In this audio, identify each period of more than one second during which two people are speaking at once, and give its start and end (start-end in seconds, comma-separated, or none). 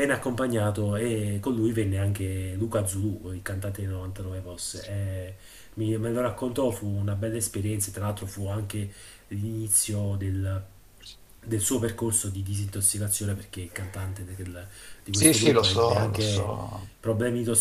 15.1-16.5